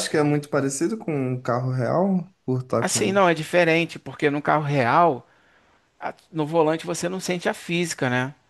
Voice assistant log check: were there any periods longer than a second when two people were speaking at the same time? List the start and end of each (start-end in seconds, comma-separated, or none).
none